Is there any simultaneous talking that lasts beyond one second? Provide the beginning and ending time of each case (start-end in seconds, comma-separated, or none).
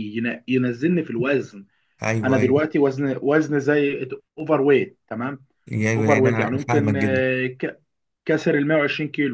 6.0-7.2